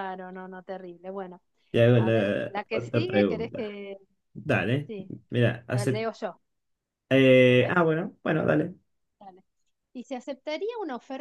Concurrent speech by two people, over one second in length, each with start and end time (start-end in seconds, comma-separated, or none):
2.0-3.8